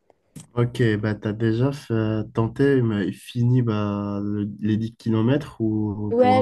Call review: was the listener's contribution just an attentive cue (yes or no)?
no